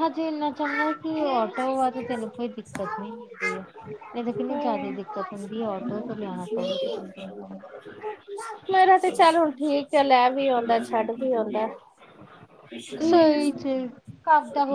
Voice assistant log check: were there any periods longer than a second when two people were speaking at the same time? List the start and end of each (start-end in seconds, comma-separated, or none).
none